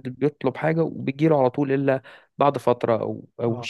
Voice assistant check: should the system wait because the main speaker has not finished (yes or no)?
no